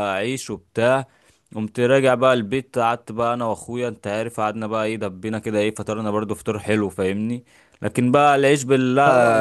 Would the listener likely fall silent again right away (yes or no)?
yes